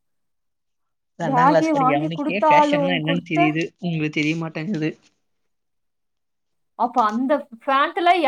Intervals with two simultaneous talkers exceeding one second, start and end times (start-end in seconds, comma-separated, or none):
1.3-3.4